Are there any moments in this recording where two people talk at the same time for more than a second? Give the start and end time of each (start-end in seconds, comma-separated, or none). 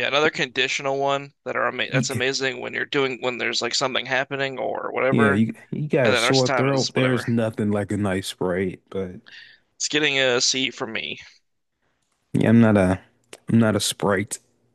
6.0-7.3